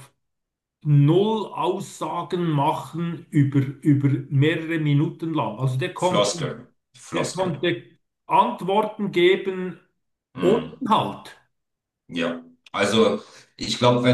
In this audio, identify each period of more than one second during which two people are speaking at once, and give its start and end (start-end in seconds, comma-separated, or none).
none